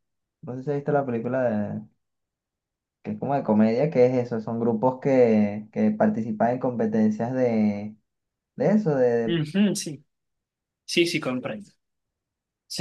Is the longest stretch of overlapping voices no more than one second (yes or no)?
yes